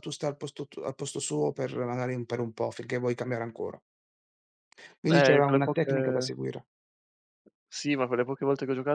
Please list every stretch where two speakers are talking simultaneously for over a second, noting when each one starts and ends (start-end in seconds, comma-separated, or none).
5.1-6.3